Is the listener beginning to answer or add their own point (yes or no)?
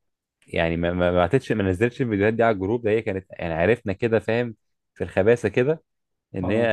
no